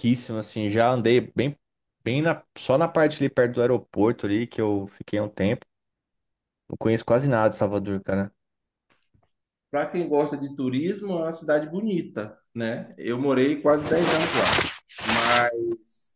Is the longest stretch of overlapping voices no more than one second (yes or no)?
yes